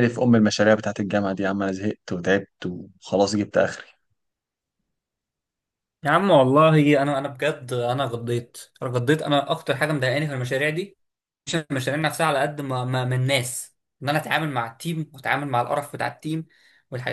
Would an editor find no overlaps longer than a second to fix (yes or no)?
yes